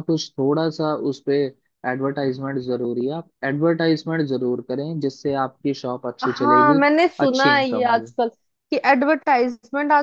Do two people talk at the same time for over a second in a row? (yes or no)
yes